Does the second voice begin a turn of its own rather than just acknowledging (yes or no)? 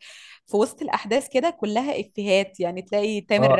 yes